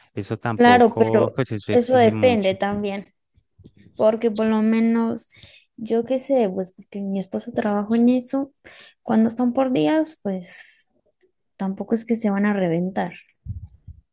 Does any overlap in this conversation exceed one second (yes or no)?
yes